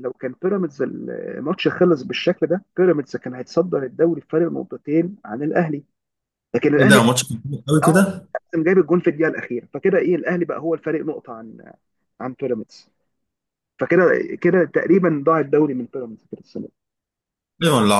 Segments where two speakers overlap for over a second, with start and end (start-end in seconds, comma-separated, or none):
none